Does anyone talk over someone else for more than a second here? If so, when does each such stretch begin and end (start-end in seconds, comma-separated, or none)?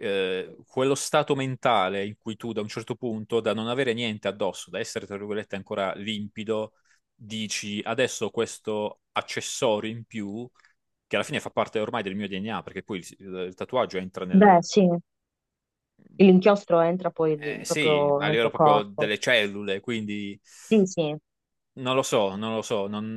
17.6-19.1